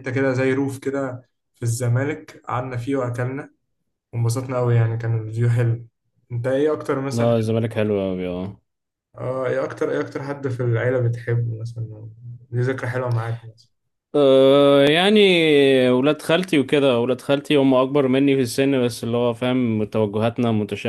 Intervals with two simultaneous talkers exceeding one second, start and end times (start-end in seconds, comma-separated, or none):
none